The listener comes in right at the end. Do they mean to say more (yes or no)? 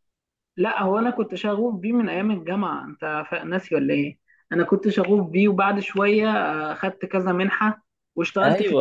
yes